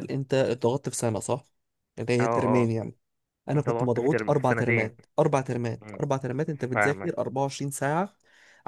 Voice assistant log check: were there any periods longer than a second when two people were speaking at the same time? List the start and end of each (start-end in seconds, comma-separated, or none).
3.5-4.9